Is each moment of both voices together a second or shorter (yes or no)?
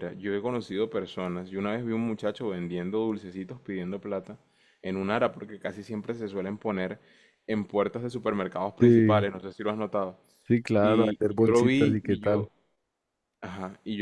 no